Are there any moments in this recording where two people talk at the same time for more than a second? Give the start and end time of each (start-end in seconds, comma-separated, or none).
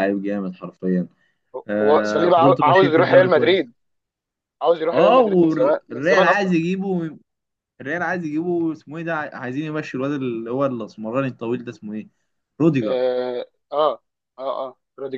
1.8-3.7, 4.9-6.5